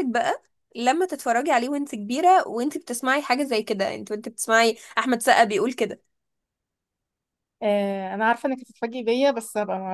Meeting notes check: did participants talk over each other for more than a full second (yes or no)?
no